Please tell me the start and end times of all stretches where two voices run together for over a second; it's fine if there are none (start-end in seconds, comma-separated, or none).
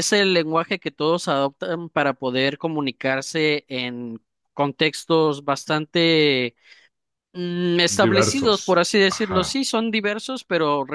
7.9-9.6